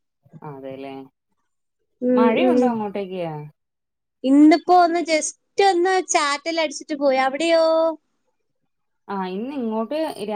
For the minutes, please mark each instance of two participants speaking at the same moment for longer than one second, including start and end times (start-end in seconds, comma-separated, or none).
none